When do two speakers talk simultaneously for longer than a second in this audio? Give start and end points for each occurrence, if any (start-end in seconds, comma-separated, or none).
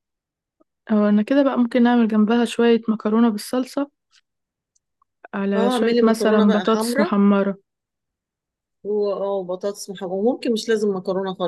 5.5-7.1